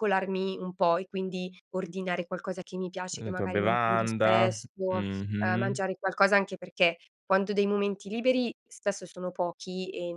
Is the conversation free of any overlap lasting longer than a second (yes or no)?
no